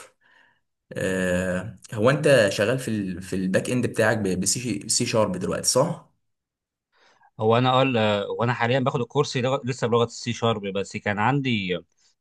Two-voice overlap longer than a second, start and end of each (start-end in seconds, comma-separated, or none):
none